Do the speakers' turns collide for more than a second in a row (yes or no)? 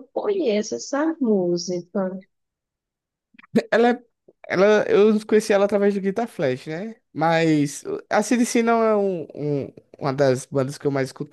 no